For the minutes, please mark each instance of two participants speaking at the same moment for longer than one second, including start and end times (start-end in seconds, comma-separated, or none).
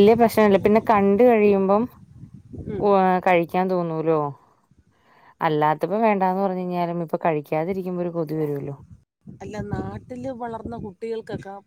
none